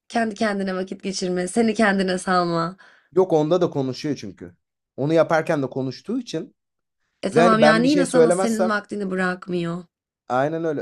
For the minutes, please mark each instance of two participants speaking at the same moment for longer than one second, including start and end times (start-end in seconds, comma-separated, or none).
7.3-8.8